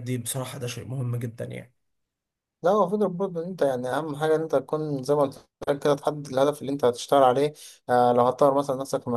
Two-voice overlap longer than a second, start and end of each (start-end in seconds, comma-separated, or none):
none